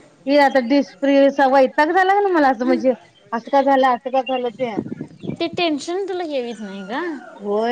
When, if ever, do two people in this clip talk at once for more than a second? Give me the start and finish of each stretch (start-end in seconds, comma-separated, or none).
none